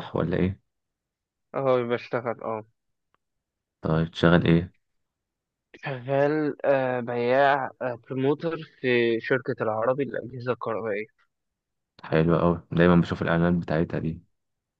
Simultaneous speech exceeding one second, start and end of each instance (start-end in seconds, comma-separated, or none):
none